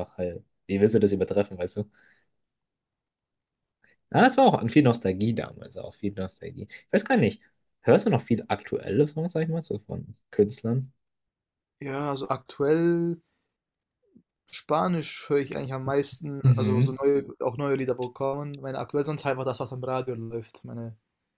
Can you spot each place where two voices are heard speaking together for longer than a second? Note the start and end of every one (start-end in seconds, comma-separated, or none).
none